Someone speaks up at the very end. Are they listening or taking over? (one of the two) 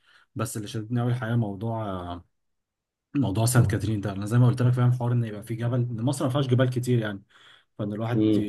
listening